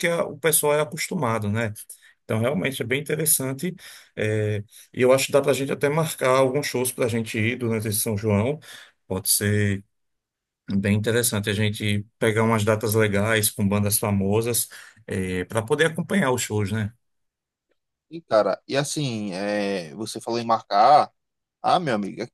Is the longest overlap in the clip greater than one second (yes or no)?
no